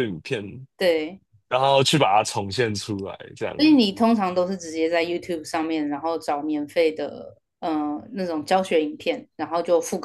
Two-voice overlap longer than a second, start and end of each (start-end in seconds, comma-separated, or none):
none